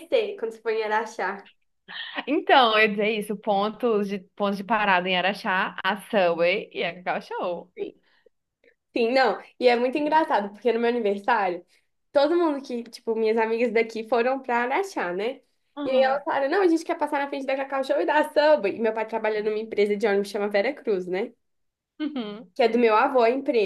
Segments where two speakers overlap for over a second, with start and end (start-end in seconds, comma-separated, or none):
none